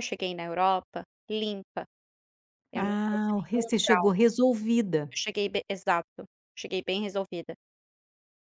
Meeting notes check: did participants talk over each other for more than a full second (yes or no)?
yes